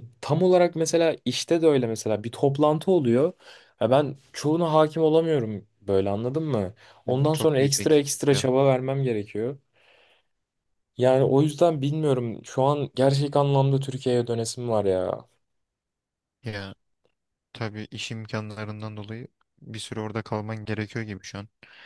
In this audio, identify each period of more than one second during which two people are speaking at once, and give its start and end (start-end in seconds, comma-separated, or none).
7.1-8.5